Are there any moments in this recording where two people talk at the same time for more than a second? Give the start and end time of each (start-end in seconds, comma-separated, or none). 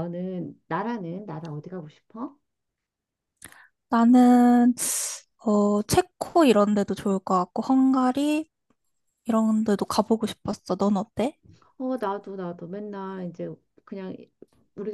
none